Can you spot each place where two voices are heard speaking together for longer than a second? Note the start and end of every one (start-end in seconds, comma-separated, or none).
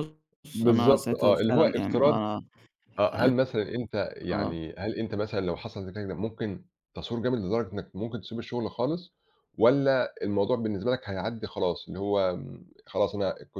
0.5-2.2